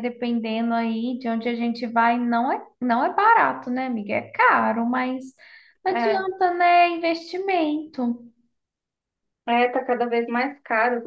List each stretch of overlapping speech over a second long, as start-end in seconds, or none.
none